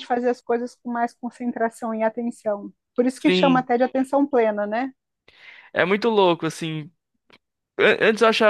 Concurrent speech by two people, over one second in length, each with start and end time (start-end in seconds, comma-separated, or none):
none